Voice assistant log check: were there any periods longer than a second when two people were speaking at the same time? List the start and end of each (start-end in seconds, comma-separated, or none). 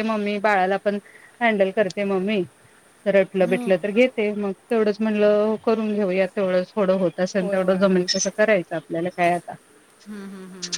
none